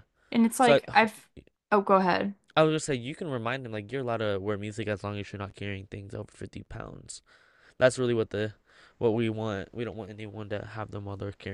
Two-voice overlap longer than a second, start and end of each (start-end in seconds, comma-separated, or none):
none